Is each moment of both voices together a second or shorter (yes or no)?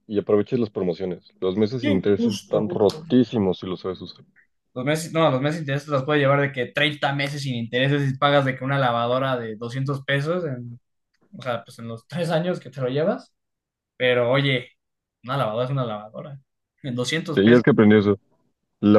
no